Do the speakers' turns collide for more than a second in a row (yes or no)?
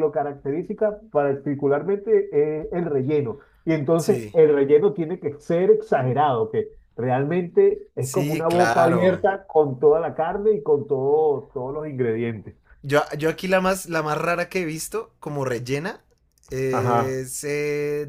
yes